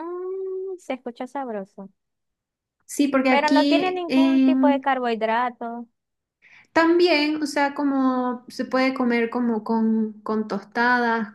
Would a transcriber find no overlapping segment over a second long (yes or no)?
no